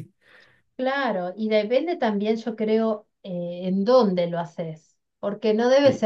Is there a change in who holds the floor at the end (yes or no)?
no